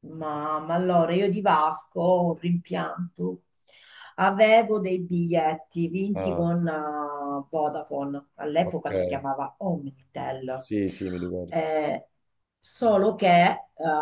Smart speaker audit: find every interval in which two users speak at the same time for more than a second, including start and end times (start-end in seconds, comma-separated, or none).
none